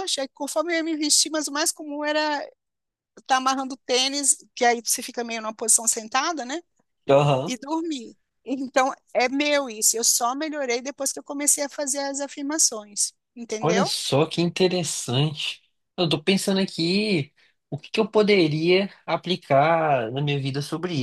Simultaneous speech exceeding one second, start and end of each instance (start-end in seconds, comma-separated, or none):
none